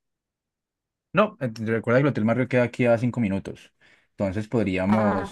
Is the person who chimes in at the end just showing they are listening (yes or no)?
yes